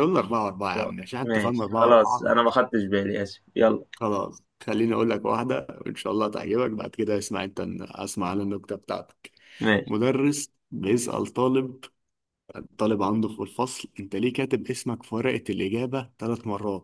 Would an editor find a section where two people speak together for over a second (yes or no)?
yes